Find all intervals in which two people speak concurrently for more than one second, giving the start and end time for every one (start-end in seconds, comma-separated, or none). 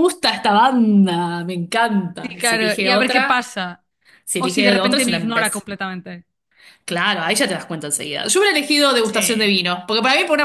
2.2-3.5, 4.4-5.7